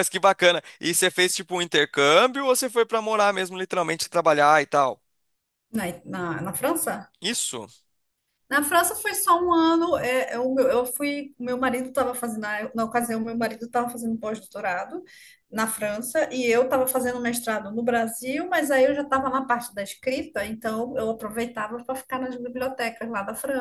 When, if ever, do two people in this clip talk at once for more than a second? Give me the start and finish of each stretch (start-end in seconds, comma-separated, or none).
none